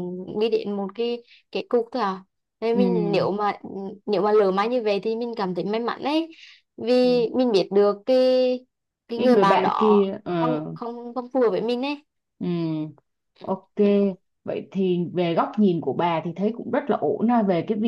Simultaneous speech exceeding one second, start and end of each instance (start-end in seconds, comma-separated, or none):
9.2-10.6